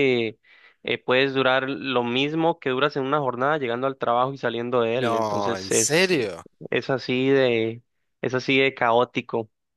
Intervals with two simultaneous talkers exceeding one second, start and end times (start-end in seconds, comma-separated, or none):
5.0-6.2